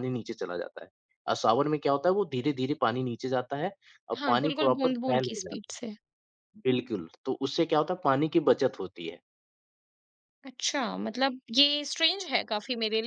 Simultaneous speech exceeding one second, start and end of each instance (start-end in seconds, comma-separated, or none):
4.2-6.0